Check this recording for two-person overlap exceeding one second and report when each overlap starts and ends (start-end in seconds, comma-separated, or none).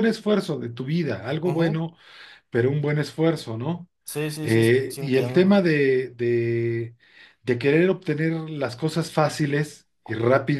4.4-5.7